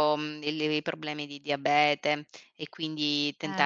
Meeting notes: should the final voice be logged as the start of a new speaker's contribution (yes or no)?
no